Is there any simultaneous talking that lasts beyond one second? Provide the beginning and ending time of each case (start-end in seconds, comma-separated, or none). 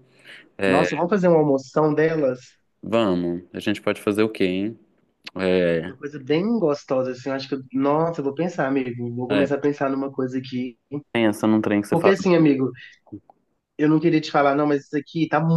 none